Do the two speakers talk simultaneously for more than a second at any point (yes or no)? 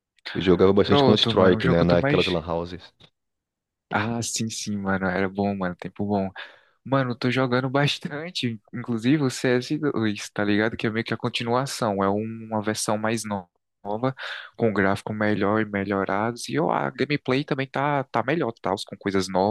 yes